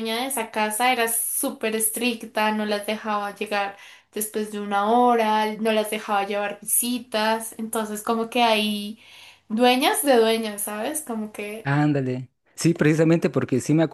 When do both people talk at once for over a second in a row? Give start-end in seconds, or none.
none